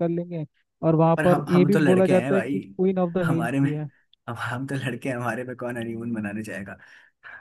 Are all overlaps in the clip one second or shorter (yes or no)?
no